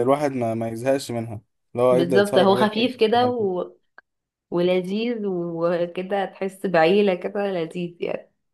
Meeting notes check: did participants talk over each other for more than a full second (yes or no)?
yes